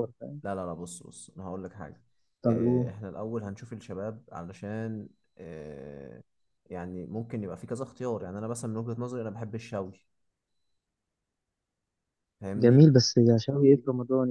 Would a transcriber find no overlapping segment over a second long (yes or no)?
yes